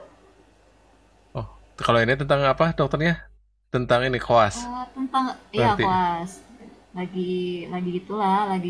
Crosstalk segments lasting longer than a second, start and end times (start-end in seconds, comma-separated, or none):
none